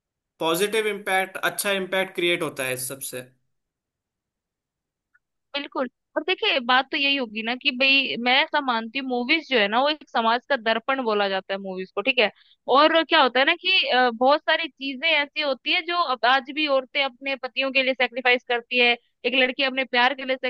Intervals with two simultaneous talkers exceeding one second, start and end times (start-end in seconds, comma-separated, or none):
none